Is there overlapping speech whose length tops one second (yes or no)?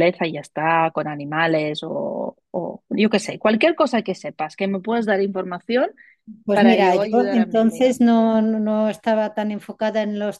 yes